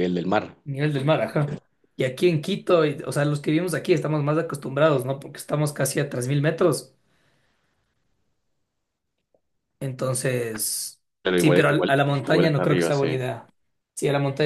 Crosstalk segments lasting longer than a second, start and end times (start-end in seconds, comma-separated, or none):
11.2-13.3